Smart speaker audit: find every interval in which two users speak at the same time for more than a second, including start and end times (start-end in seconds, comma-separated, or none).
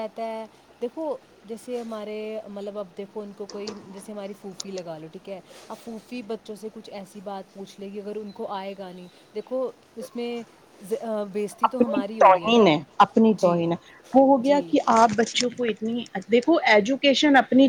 none